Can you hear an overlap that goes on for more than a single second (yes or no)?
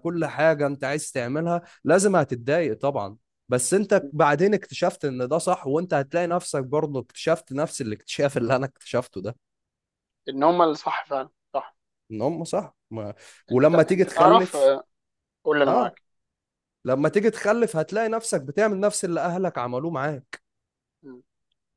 yes